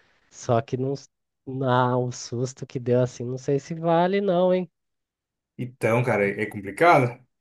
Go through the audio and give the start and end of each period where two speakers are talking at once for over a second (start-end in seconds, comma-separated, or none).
none